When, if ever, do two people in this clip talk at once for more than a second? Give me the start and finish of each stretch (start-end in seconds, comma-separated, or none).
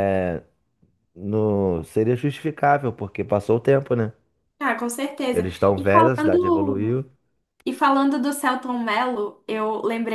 5.3-7.0